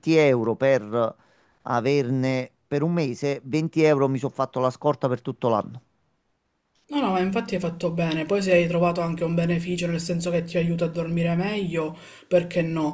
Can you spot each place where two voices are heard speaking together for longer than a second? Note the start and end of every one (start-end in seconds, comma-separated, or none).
none